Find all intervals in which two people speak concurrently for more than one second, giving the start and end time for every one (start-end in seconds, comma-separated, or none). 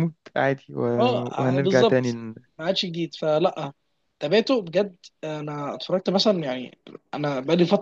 1.0-2.2